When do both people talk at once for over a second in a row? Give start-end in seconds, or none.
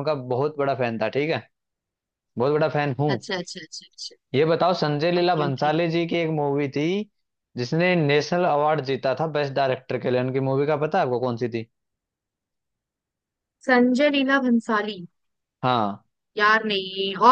none